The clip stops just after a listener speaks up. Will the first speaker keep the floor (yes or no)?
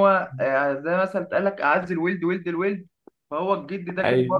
yes